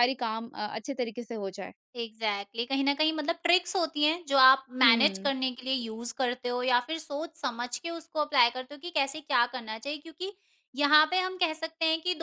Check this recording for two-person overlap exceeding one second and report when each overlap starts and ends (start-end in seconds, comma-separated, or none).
none